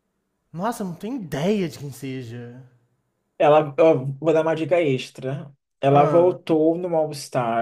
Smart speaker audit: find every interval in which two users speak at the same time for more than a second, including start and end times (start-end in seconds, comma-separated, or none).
none